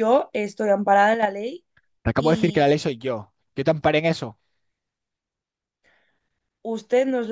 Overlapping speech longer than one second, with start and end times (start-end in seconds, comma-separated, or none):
none